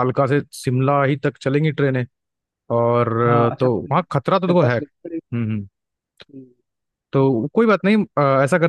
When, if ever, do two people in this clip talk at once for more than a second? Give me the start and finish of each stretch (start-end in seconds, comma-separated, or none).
3.2-5.2